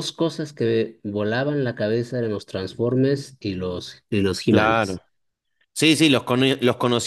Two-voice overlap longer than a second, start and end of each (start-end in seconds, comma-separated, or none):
none